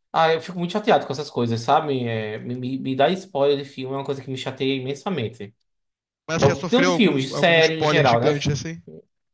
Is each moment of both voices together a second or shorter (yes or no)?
no